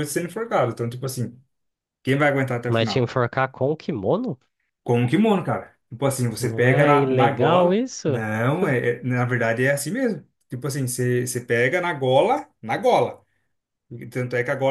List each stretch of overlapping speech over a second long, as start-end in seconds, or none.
6.4-8.2